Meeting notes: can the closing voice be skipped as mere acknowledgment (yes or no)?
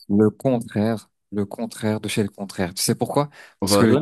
yes